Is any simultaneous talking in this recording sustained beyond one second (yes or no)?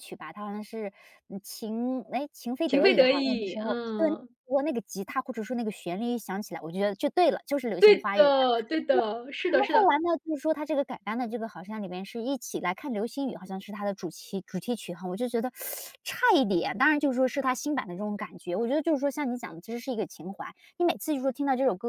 yes